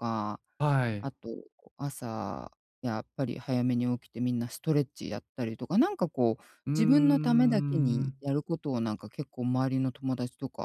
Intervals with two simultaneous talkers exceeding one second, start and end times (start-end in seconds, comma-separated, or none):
6.7-8.2